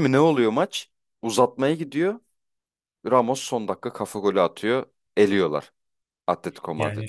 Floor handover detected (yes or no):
yes